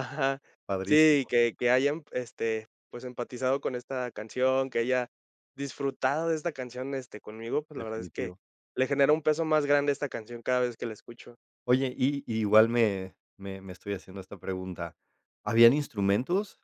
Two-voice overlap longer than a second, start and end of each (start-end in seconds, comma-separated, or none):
none